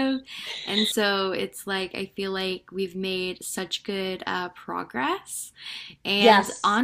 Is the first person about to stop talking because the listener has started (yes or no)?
no